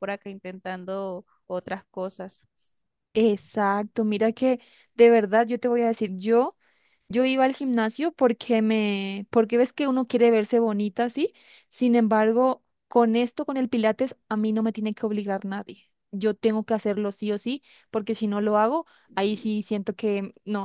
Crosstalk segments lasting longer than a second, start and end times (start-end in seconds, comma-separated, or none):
none